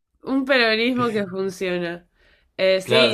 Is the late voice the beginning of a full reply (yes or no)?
yes